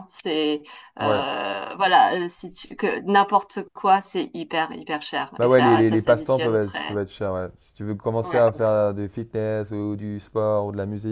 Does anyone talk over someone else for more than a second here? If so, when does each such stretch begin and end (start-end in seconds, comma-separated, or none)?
5.4-7.0